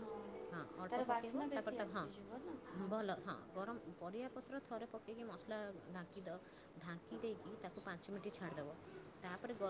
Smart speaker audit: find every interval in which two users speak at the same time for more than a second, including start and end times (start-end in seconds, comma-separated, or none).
0.9-2.5